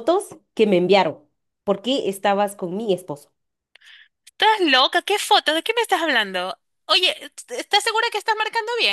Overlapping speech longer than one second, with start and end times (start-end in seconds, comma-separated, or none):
none